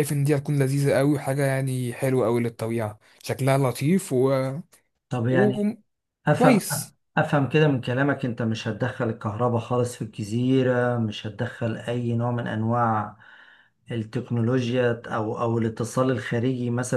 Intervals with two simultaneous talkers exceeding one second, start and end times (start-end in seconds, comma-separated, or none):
none